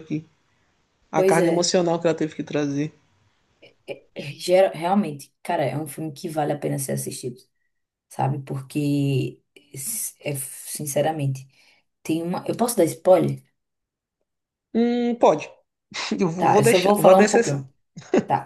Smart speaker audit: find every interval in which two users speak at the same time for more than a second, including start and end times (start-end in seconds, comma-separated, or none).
16.4-17.7